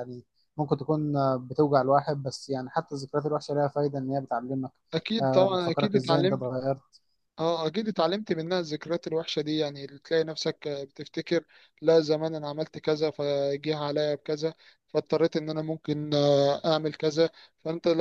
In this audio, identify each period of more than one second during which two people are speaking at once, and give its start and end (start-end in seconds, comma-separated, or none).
5.2-6.4